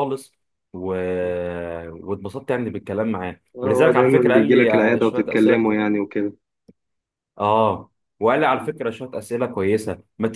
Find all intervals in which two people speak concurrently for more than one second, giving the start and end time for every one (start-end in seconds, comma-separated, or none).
3.5-5.7